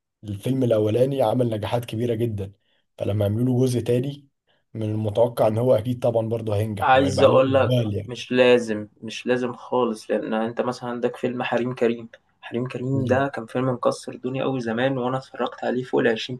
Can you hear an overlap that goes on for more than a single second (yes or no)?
yes